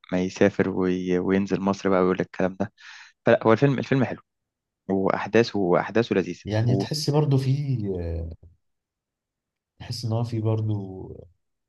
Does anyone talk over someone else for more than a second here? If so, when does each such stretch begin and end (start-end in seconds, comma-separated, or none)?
none